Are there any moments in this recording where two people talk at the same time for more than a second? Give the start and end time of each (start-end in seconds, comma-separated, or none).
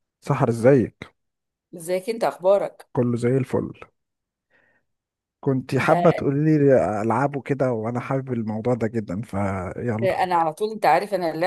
none